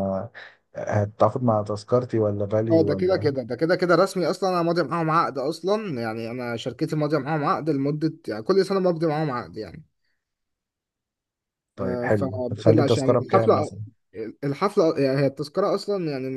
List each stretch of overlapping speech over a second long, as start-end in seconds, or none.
11.8-13.7